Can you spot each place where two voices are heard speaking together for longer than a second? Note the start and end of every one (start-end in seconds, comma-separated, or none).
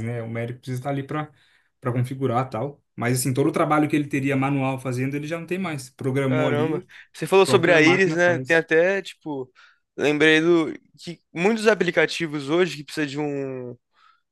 7.4-8.6